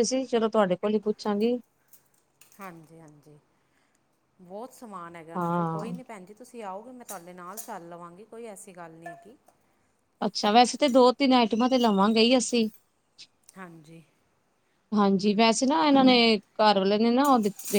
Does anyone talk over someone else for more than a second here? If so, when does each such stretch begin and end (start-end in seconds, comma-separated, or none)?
none